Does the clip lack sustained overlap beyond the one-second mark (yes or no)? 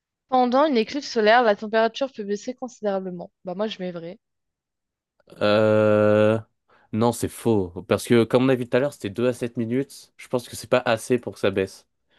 yes